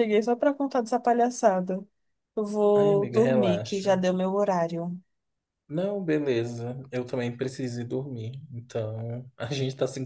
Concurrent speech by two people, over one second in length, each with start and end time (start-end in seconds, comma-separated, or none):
2.7-4.0